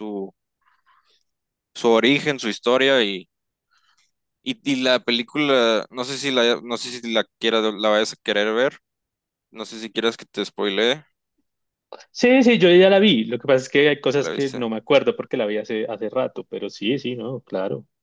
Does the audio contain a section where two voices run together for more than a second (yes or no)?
no